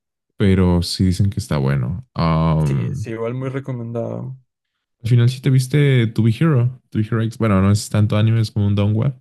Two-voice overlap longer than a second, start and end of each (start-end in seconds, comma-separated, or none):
none